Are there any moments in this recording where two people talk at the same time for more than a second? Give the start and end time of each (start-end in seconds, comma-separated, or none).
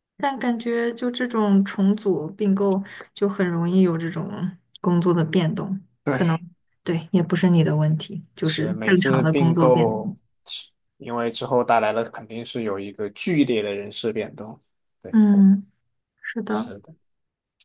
8.4-10.1